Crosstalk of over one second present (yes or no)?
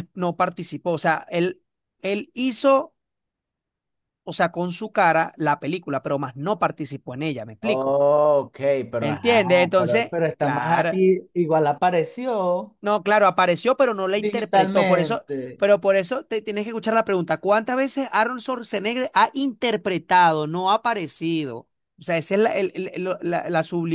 yes